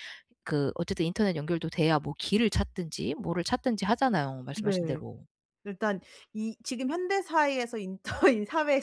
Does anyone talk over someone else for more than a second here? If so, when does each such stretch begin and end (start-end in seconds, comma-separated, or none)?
none